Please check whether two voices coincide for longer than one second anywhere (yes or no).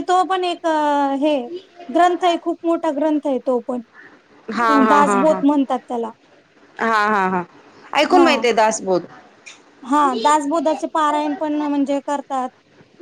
no